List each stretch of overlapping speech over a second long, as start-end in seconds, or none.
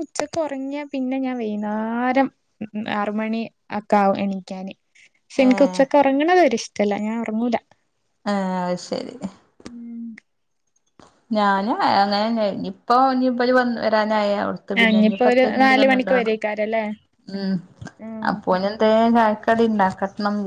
14.8-16.3